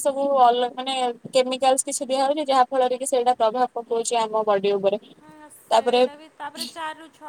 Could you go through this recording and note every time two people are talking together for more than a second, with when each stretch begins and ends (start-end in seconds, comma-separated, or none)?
none